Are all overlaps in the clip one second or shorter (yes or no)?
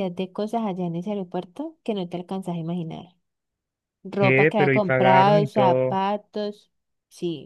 no